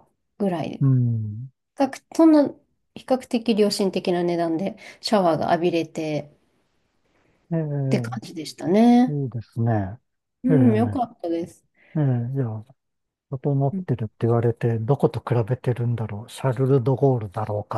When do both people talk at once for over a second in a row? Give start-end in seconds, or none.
none